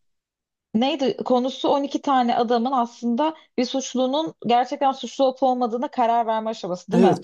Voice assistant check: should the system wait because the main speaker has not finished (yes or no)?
no